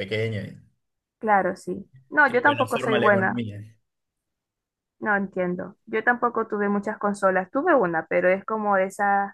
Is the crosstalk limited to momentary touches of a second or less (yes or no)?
no